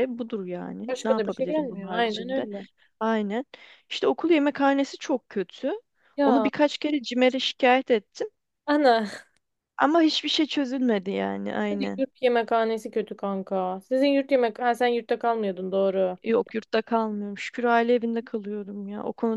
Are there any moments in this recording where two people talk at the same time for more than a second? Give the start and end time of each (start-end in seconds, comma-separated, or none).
0.9-2.5